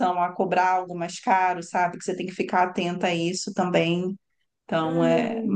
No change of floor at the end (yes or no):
no